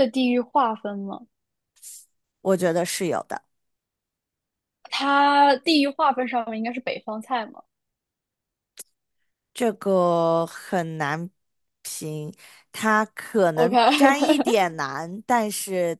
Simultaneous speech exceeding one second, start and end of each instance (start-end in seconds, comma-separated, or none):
13.6-14.8